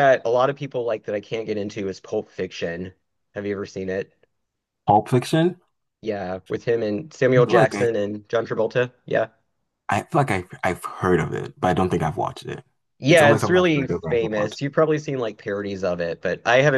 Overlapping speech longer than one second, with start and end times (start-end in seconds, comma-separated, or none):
13.1-14.7